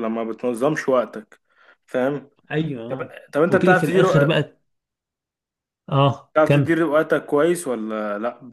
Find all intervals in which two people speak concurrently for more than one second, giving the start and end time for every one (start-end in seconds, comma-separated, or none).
2.9-4.3